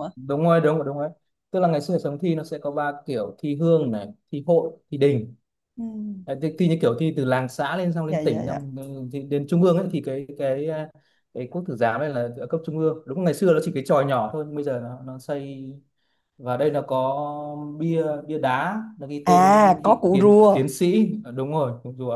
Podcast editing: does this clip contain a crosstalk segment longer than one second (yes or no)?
yes